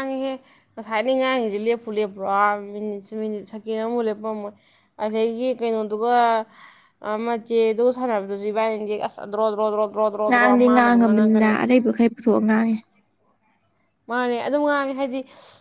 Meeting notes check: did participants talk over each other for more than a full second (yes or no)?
yes